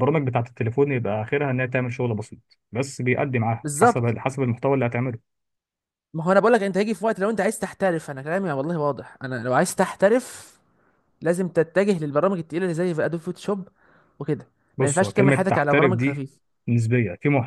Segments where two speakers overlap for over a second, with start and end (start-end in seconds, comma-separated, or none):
14.8-16.2